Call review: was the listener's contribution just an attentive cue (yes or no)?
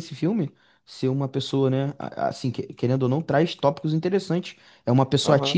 yes